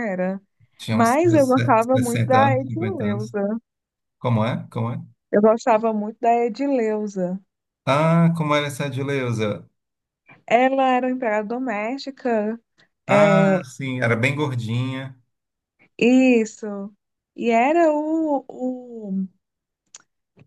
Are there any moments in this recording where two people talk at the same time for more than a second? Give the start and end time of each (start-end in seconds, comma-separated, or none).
1.9-3.3